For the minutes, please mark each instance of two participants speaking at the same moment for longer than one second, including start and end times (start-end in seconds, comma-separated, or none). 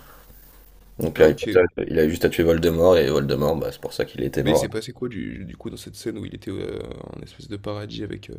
none